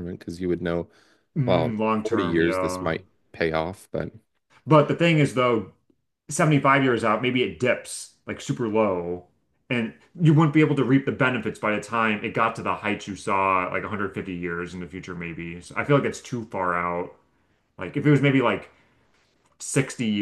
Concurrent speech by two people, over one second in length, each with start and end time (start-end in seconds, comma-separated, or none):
1.4-2.9